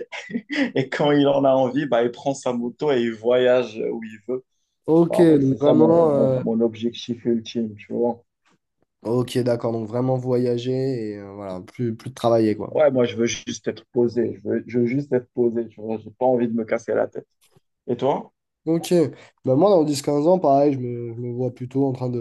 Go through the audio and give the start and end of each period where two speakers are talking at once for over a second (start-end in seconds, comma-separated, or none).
5.1-6.4